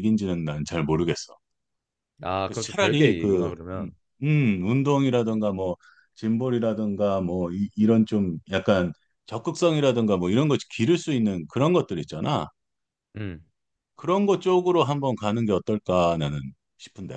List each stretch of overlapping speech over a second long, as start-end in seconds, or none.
2.5-3.9